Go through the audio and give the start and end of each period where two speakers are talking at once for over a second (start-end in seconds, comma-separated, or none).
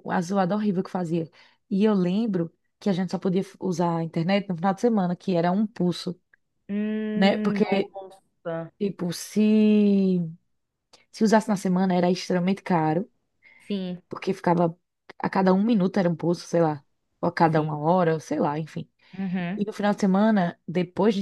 none